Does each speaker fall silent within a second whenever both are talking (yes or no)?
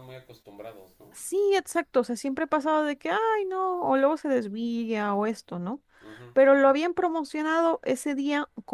yes